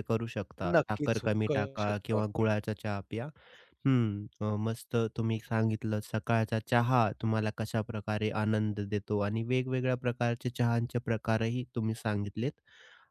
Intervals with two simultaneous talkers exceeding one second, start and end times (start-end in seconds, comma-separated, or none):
0.7-2.5